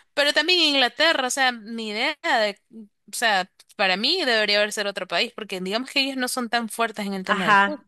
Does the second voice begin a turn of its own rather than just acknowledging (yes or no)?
yes